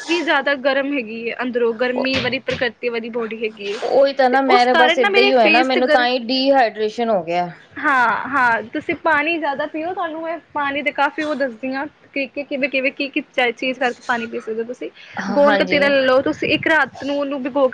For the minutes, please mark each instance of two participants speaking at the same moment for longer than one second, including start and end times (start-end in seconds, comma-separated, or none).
4.3-6.0